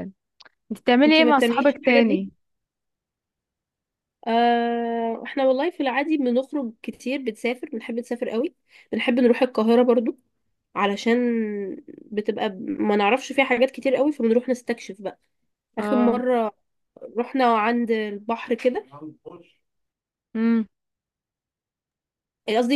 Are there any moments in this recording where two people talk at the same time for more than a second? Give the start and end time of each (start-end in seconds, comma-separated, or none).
1.1-2.2